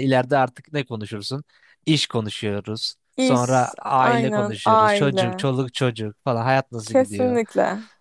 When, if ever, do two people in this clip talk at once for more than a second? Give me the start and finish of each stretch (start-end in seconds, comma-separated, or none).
3.2-5.5